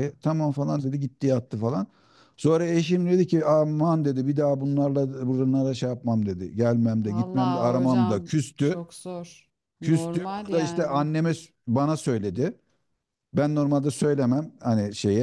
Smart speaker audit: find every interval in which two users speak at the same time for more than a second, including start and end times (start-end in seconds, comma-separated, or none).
7.1-8.8, 9.8-11.1